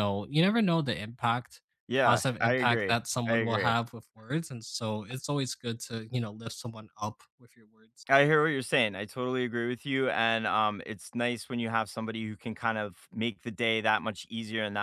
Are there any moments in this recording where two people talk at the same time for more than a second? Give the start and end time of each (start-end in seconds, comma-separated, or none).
2.0-3.8